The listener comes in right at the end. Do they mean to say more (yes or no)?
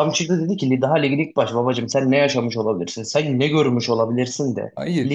no